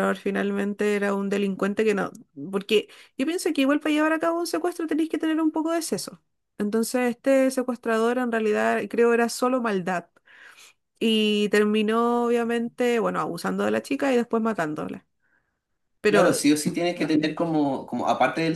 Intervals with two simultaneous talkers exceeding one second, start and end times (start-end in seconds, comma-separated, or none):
none